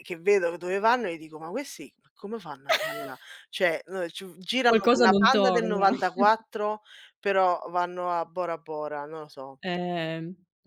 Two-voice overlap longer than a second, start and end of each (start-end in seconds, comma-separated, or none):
4.6-5.9